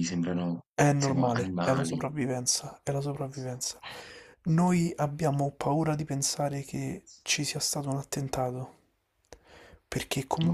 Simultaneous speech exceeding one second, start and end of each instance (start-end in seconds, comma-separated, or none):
0.7-2.1